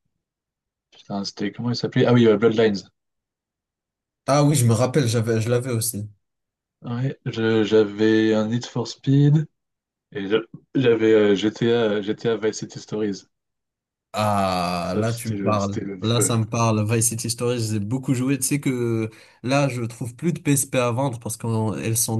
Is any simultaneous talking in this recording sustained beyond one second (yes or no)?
yes